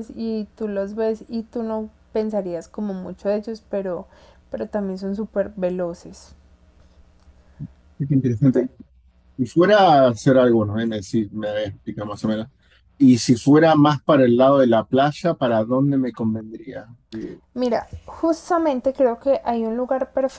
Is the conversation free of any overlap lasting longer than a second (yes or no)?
yes